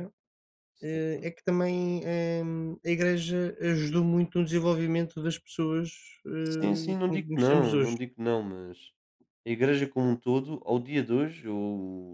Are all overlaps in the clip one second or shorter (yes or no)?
no